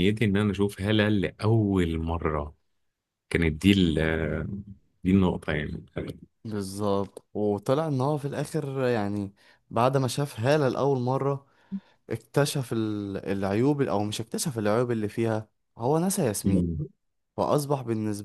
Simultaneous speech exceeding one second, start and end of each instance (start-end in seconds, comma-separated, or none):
none